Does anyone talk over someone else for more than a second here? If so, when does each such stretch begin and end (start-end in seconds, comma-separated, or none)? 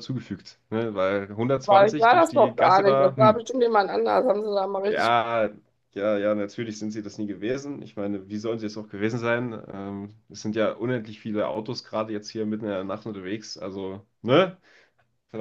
1.6-3.4